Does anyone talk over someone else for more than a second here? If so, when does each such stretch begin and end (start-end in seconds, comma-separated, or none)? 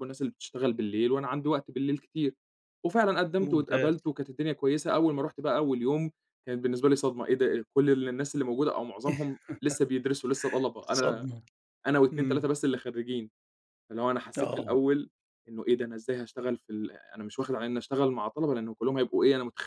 none